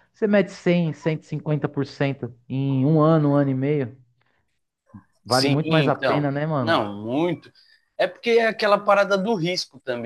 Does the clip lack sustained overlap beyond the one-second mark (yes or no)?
no